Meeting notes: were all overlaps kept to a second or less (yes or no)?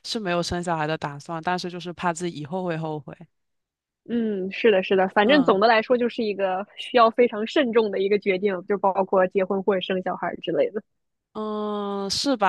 yes